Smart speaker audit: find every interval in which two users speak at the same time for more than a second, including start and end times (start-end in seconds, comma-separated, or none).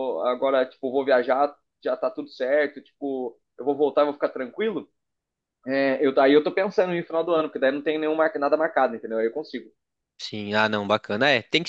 none